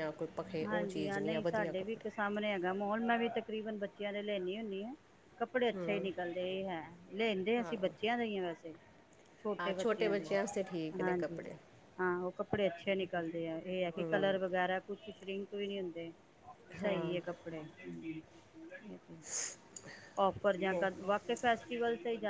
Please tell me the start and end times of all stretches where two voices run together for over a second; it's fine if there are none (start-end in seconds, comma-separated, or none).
0.6-2.0